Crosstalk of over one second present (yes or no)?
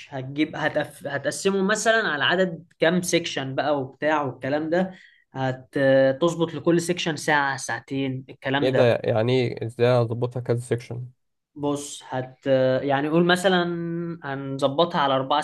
no